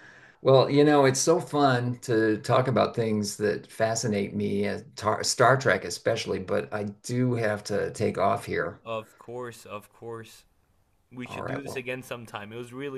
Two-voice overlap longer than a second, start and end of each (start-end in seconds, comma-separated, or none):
none